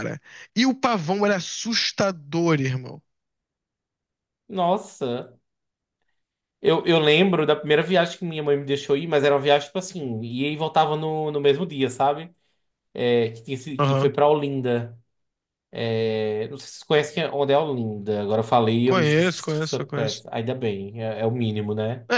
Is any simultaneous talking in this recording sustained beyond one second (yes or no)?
yes